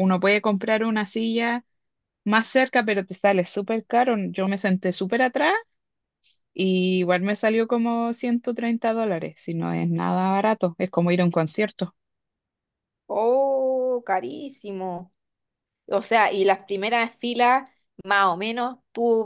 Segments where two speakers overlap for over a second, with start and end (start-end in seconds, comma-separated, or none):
none